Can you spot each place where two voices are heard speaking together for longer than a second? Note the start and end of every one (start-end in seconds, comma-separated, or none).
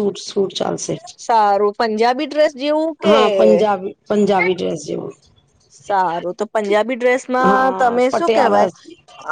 7.4-8.7